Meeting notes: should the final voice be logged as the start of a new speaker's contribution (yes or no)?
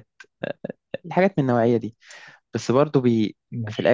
no